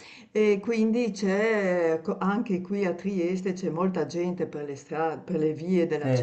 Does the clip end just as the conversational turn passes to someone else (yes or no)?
no